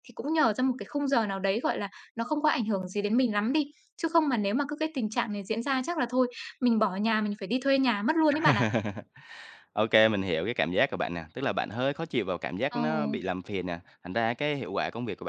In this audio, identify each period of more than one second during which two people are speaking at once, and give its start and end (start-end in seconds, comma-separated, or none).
none